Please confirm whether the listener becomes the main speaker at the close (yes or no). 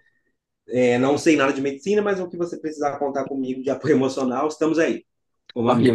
yes